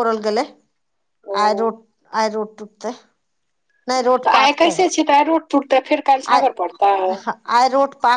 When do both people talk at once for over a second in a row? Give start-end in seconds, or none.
none